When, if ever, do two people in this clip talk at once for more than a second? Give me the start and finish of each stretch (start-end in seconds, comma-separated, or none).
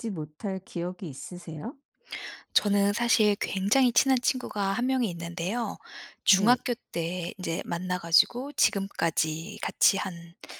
none